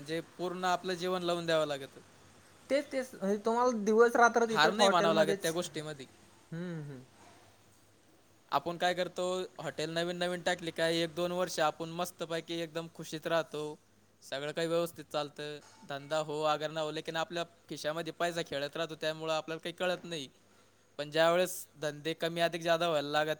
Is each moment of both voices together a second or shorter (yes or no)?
no